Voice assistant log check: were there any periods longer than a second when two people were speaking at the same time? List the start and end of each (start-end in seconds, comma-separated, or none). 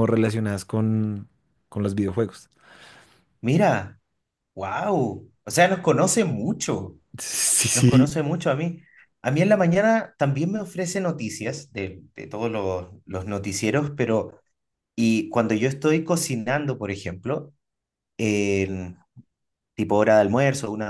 none